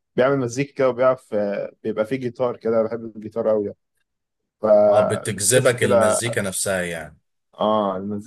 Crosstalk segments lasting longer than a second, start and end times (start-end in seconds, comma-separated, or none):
4.9-6.2